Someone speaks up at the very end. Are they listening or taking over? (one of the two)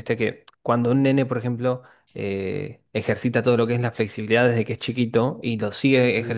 listening